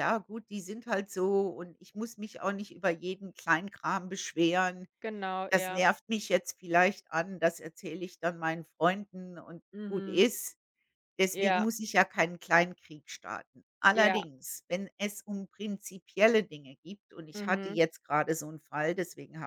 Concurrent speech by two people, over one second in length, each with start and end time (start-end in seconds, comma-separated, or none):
none